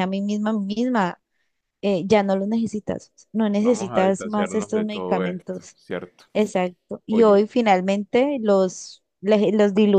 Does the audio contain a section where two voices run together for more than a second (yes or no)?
yes